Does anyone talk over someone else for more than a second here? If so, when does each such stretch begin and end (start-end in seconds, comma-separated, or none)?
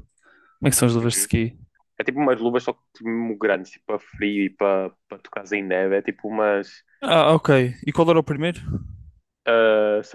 none